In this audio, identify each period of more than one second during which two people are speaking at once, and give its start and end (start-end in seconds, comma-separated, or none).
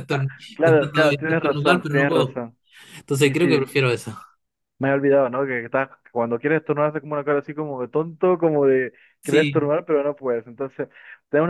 0.5-2.4